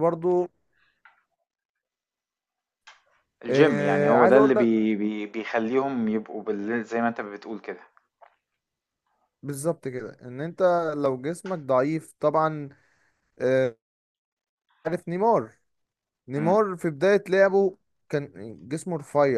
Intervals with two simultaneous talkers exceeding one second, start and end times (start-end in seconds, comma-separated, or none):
3.5-4.7